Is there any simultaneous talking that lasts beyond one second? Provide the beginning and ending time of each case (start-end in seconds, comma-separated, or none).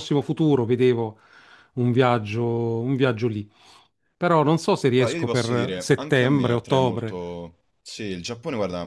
5.0-7.2